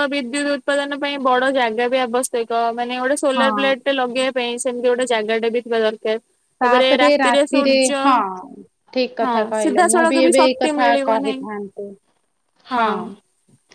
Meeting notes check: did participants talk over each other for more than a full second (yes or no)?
yes